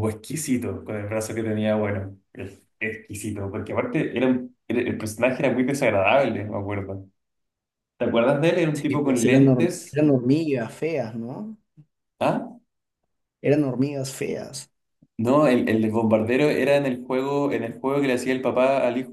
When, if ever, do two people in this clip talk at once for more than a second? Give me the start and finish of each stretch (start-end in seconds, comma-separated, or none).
8.7-10.0